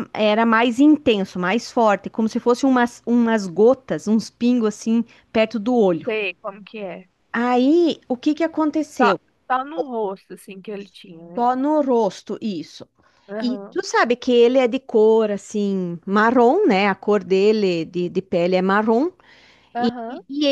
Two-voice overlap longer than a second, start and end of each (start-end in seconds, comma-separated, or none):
none